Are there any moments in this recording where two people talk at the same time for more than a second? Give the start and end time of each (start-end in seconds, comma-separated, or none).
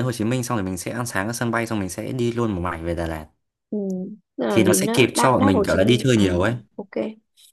4.5-6.2